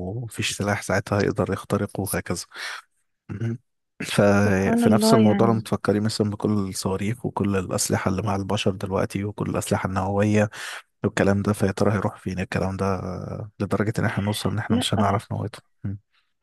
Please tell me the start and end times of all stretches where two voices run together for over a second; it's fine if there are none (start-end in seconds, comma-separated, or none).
4.4-5.6